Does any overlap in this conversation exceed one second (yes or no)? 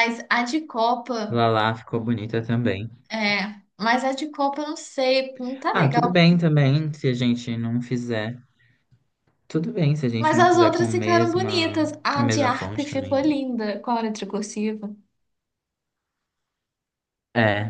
yes